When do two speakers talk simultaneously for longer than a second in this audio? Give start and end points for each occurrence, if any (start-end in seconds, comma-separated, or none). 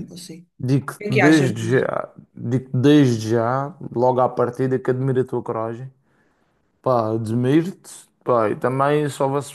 0.6-1.9